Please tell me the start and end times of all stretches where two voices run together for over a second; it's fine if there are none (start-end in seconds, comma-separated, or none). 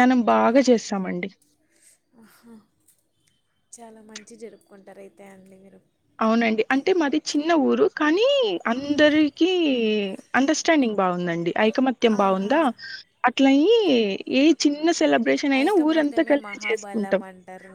15.6-17.2